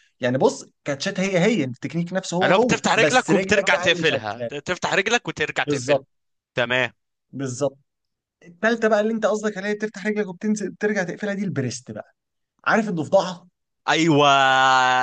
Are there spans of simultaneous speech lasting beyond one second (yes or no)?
yes